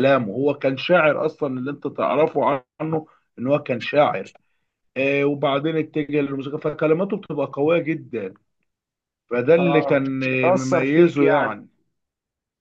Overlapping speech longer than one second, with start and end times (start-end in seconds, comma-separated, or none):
9.6-11.6